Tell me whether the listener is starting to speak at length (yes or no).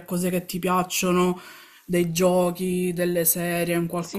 yes